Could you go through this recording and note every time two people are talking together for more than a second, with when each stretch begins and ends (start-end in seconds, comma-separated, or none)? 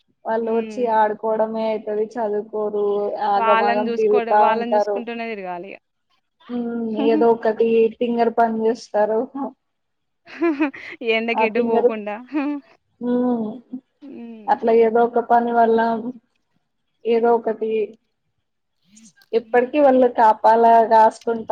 3.4-5.0